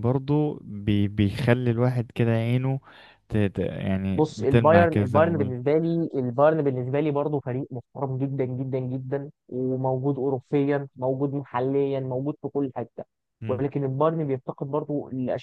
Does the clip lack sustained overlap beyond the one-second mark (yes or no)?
no